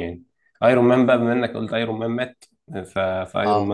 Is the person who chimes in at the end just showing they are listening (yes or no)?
yes